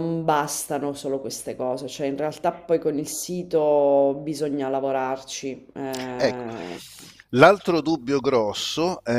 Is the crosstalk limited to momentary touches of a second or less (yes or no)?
yes